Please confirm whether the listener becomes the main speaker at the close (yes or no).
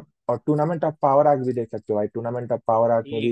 yes